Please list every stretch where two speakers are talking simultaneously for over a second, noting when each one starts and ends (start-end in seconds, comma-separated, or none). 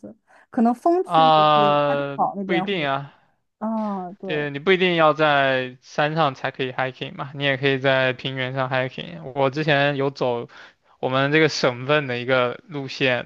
1.0-2.9